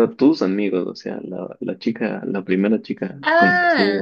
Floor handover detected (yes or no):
yes